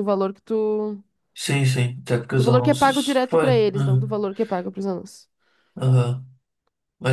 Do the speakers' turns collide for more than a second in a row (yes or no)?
yes